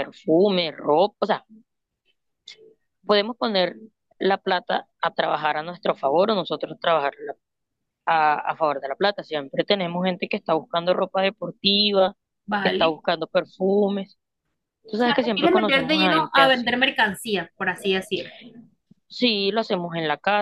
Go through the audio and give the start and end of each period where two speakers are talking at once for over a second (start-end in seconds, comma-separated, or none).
15.3-16.8